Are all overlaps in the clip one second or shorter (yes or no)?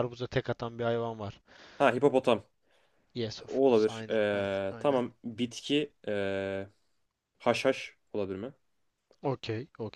no